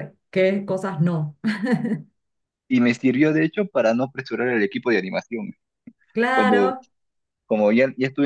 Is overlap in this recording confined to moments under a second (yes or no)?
yes